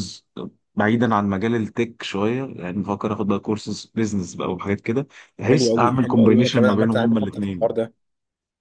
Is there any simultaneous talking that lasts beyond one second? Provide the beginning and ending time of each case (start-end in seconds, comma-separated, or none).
5.5-7.8